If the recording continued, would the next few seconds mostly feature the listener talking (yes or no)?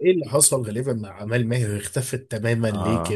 yes